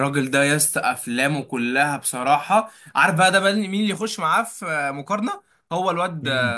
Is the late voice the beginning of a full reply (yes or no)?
no